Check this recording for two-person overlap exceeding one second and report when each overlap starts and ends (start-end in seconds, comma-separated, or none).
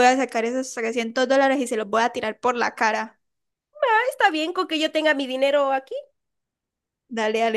none